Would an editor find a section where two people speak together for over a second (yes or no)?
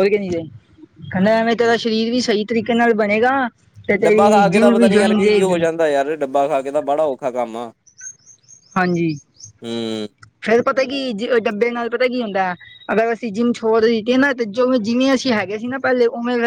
yes